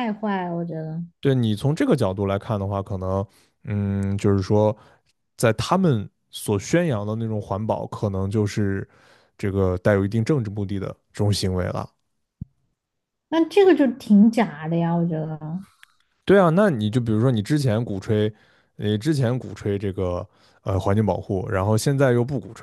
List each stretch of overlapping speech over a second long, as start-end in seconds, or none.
none